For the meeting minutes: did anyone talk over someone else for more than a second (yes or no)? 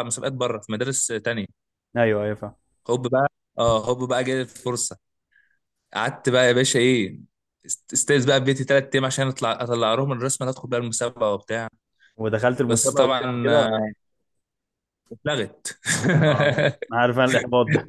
yes